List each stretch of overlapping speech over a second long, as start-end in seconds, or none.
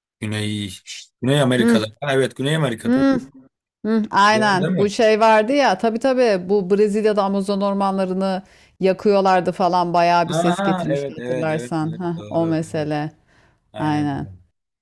10.3-12.9